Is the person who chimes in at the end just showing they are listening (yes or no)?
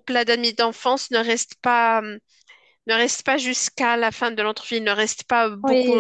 no